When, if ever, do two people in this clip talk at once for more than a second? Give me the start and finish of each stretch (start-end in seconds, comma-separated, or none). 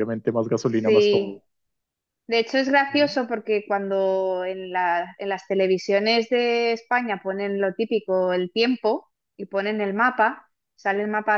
none